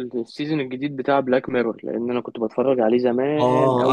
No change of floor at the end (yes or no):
no